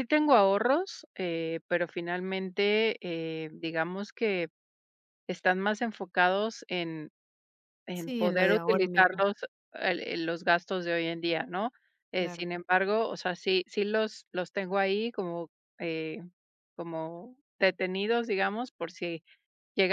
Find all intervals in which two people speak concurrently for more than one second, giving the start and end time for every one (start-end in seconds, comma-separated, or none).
7.9-9.2